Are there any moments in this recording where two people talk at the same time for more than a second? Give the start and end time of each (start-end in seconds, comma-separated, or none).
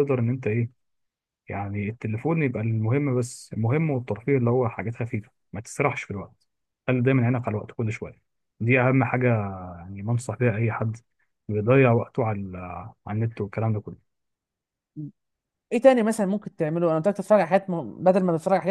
none